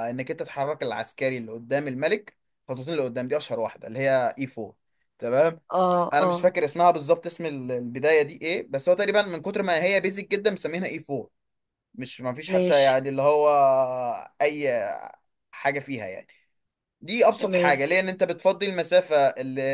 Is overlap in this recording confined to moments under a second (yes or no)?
yes